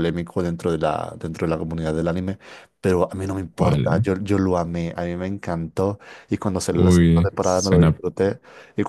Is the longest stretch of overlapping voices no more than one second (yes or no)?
no